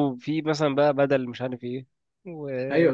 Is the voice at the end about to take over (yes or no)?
yes